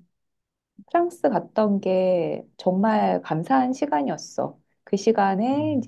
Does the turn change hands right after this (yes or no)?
no